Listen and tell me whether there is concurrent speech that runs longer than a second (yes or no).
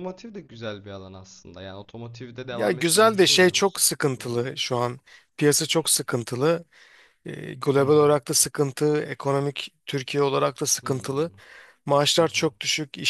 yes